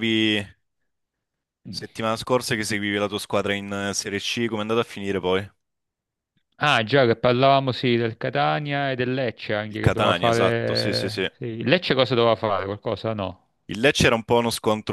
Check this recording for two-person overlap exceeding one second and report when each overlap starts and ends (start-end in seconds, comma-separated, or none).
9.7-11.2